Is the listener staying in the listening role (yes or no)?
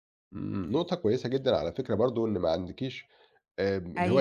yes